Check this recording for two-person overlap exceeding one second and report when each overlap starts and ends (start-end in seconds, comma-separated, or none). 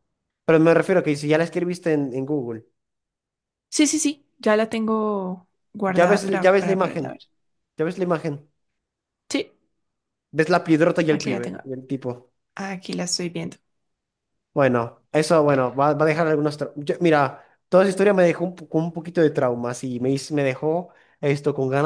5.9-7.1